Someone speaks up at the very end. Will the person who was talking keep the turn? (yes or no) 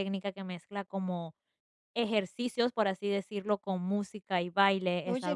yes